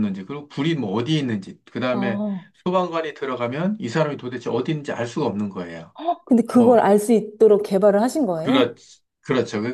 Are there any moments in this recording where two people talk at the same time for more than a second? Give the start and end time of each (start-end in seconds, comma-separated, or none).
none